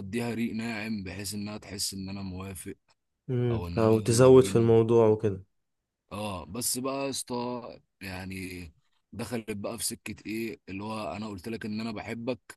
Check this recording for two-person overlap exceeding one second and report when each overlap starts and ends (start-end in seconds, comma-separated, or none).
3.5-4.7